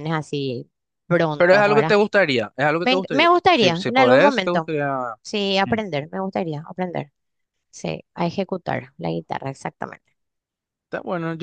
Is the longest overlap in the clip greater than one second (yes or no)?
yes